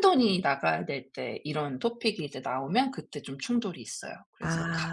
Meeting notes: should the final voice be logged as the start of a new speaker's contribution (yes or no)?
yes